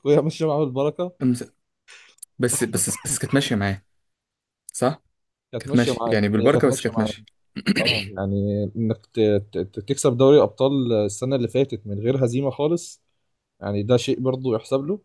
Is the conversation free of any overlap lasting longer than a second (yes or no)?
no